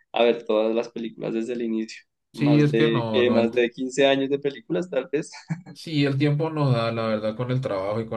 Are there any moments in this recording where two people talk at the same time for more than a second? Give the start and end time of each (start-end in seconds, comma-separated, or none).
2.3-3.7